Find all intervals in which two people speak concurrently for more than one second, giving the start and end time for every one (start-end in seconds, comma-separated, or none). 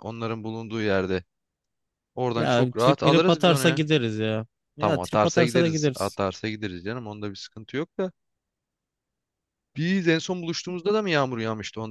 2.4-3.8, 4.8-6.2